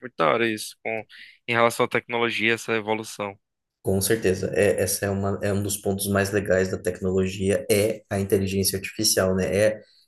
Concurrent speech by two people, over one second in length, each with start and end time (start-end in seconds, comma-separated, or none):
none